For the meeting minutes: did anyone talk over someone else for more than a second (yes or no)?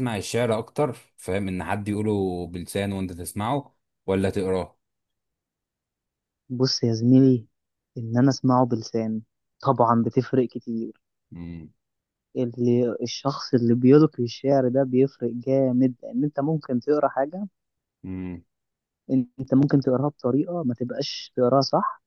no